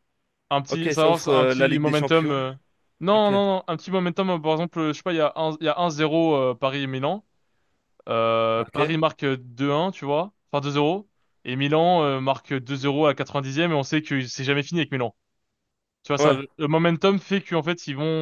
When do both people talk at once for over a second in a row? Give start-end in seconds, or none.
0.7-2.3